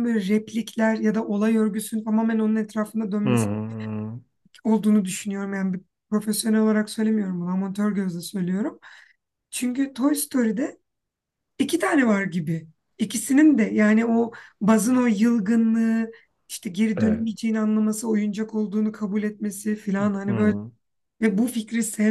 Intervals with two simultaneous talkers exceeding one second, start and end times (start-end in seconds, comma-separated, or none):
none